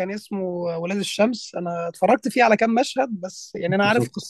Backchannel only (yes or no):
yes